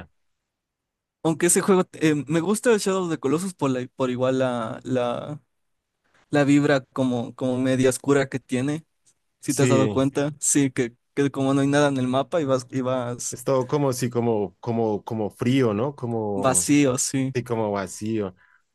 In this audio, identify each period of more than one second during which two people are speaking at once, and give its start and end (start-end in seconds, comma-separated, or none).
none